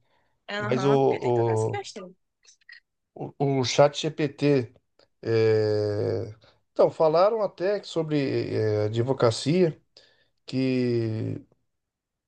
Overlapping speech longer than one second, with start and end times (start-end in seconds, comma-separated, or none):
0.6-1.8